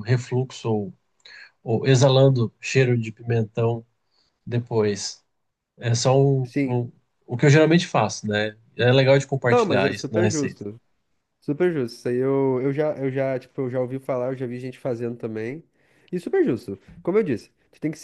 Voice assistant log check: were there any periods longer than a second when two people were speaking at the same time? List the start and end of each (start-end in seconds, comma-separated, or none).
9.5-10.7